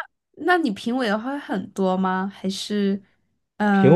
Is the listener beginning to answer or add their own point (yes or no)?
yes